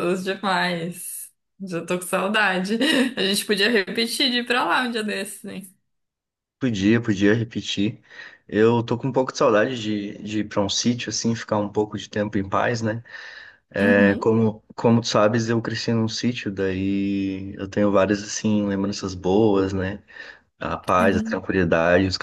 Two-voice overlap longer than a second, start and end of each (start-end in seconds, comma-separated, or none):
none